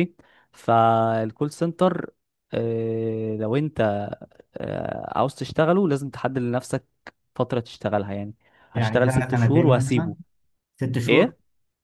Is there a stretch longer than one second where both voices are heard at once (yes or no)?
yes